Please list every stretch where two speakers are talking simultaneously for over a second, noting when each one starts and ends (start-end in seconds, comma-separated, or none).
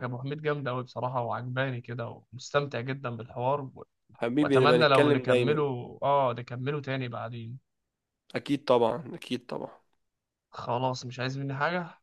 4.4-5.6